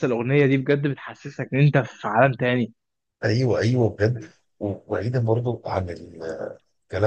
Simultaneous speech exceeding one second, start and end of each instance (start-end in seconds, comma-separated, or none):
none